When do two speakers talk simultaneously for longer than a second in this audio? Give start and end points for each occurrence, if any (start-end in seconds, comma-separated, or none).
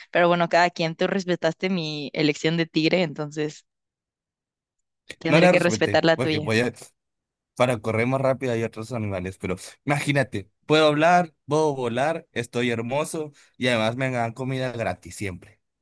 5.3-6.5